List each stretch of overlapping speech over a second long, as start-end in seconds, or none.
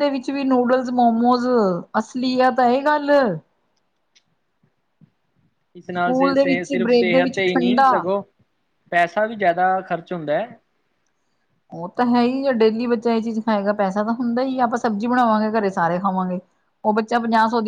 6.0-7.9